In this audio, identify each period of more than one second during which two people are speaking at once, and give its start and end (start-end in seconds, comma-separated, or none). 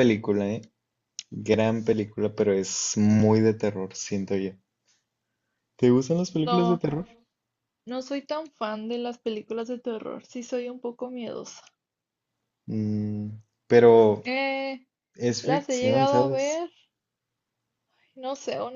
15.4-16.7